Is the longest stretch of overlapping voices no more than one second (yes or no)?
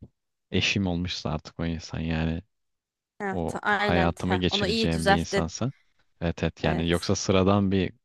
no